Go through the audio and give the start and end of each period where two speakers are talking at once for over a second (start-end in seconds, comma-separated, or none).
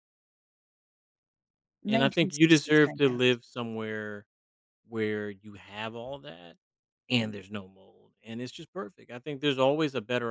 1.9-3.4